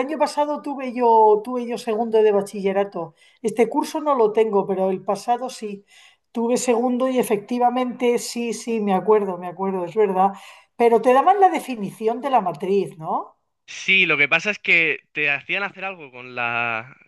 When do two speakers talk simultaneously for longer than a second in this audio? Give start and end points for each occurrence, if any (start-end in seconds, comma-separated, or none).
none